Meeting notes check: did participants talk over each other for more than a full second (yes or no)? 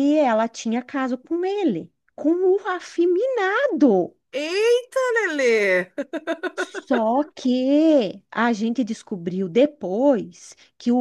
no